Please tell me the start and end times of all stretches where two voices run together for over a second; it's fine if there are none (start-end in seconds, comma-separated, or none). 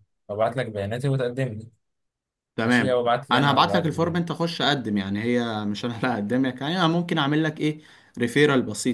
2.6-4.2